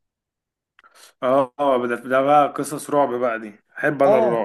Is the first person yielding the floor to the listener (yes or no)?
yes